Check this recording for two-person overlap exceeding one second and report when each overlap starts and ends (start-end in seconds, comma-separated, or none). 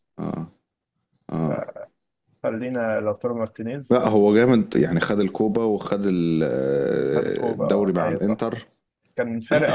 7.2-8.5